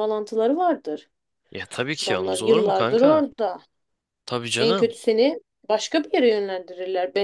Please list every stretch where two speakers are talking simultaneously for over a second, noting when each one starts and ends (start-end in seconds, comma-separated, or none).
2.0-3.3